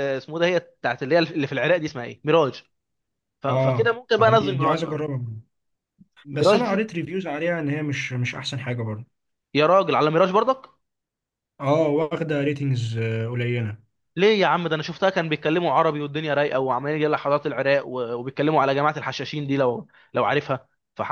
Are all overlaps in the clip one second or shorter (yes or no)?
no